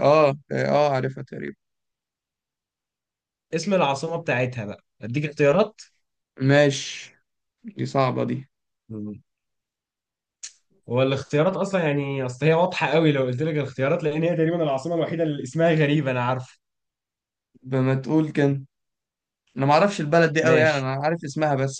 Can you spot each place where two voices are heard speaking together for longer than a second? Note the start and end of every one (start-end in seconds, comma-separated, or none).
none